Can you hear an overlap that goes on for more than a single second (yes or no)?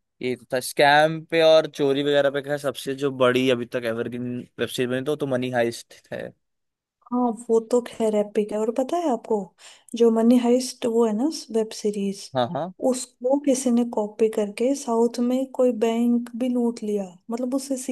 no